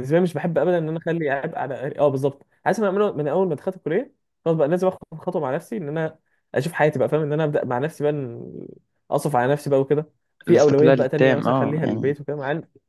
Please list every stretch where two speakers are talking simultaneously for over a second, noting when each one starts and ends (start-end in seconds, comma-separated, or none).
10.5-12.2